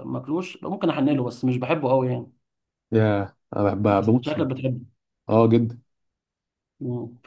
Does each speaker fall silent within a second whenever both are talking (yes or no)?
yes